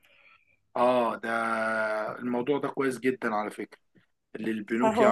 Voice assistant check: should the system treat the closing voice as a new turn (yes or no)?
no